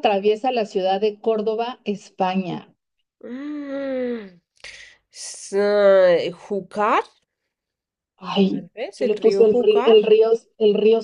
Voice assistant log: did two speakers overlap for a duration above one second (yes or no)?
yes